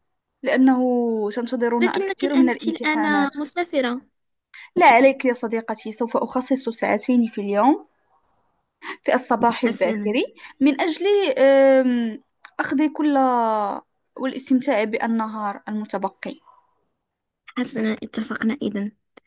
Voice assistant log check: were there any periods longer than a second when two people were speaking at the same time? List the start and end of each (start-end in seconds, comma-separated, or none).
1.8-3.4